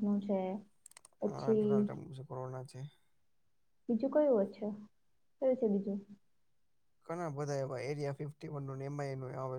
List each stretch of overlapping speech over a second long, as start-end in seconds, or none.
none